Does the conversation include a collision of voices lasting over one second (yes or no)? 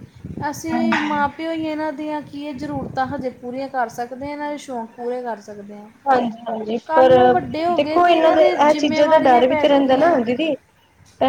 yes